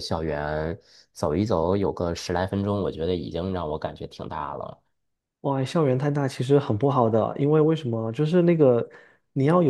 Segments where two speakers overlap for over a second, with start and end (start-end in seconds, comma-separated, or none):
none